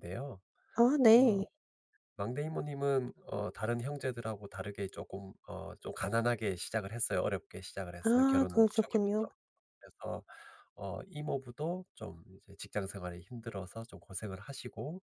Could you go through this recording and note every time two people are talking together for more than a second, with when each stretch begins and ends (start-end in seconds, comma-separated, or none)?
8.0-9.3